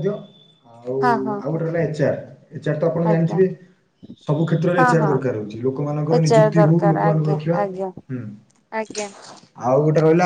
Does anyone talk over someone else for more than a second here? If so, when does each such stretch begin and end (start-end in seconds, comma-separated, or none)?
6.2-7.9